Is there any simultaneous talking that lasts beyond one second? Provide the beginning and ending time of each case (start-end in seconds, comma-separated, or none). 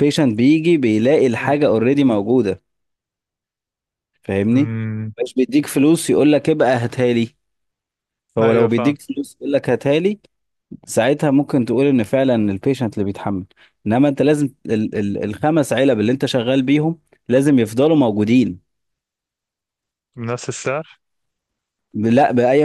none